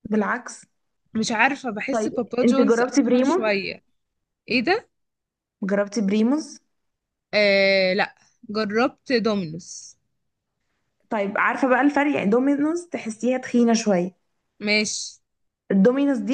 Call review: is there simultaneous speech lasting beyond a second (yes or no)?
yes